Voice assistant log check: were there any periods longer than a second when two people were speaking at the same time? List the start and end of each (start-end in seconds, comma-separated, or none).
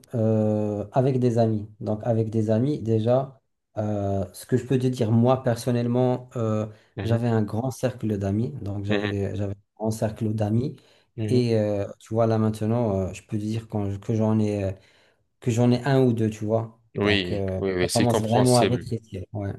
17.0-18.9